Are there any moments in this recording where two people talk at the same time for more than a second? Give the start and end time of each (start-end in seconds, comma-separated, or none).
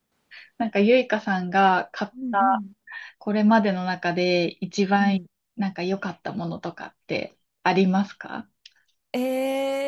none